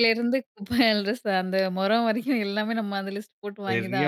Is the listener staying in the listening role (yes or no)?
no